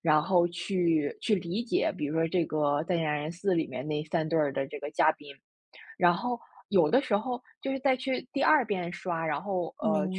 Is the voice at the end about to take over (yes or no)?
no